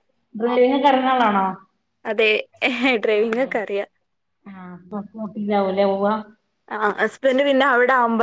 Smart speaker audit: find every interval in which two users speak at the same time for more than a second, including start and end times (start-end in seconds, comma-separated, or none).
none